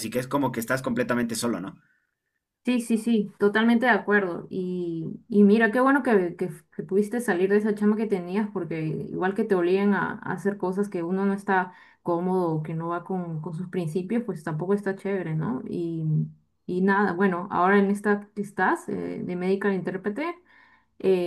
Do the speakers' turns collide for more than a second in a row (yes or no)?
no